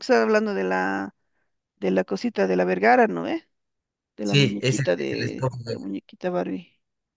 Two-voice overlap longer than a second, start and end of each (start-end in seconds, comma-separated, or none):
4.2-5.8